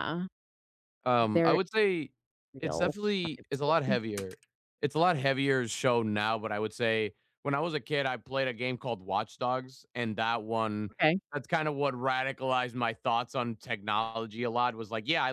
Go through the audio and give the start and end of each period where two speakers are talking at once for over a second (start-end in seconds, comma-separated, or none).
2.6-4.0